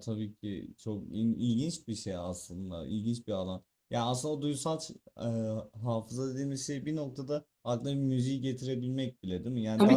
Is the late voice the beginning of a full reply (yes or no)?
no